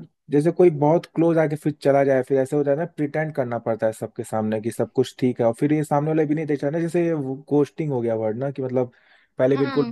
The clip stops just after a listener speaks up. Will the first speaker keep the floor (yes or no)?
yes